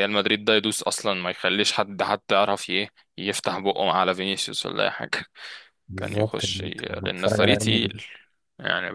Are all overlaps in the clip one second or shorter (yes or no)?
no